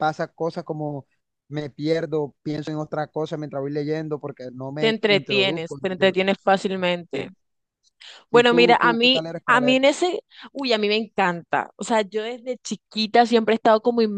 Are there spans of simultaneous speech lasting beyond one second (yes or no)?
yes